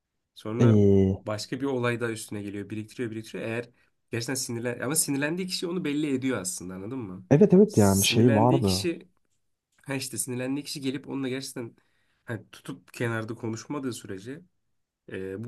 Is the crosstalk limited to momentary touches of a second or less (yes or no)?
no